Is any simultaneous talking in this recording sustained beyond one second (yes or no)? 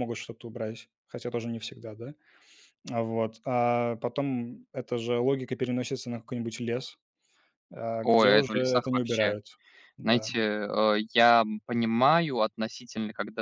yes